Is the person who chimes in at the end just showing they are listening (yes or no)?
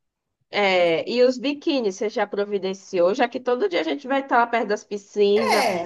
yes